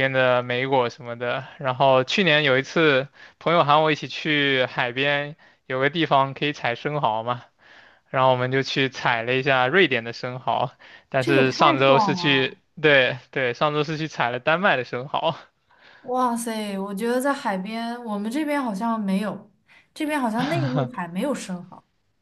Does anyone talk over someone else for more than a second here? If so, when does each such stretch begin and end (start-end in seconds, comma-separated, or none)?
11.2-12.6